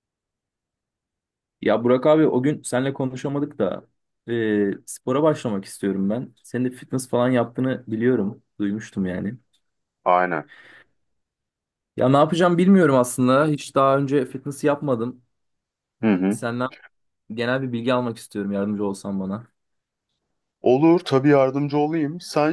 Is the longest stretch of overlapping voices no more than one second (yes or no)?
yes